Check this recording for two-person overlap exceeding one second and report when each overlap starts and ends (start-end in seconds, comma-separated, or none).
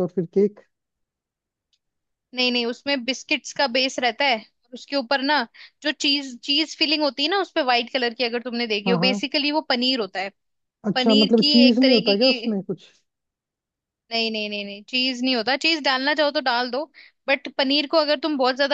10.9-12.5